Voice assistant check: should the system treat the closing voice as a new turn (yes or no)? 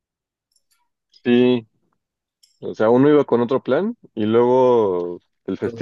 no